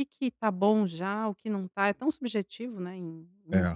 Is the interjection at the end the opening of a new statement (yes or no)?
yes